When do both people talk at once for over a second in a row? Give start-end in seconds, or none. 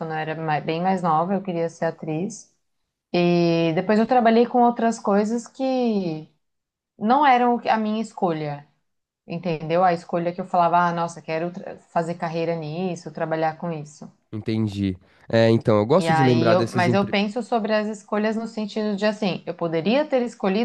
16.0-17.2